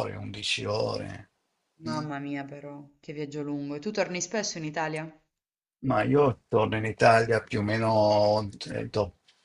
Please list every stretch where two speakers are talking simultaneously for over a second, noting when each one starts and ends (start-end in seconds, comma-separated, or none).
none